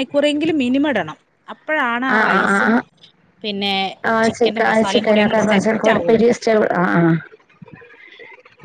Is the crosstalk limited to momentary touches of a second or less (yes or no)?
no